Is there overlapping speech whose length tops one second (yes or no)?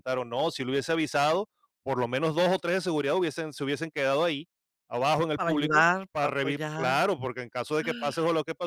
yes